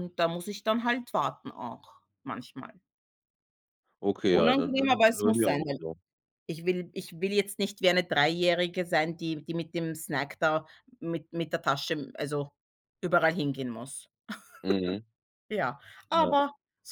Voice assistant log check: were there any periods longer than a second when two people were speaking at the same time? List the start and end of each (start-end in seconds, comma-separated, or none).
4.3-5.8